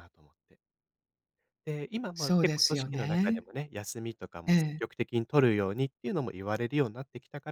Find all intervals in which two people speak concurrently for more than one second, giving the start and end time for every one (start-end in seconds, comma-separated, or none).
2.1-3.5